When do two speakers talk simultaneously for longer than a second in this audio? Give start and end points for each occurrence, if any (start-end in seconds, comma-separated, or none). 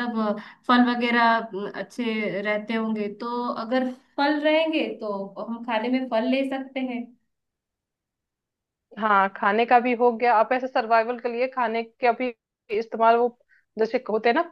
none